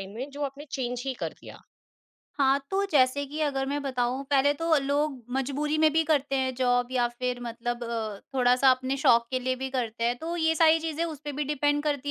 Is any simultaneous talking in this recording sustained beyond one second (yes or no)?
no